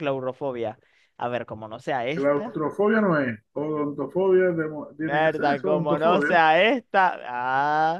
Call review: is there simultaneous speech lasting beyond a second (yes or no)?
yes